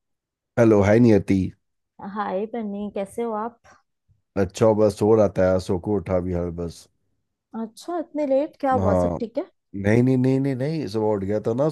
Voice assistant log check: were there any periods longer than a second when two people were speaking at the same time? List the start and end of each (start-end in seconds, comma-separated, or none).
none